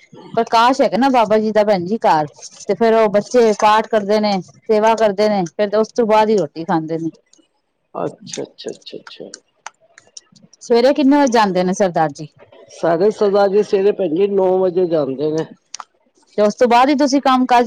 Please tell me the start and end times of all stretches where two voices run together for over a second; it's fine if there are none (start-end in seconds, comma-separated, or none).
none